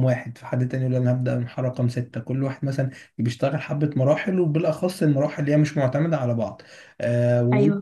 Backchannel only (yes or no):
yes